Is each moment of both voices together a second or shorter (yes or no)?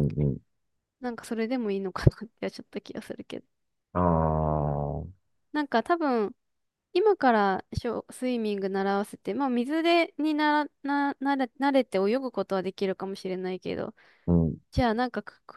yes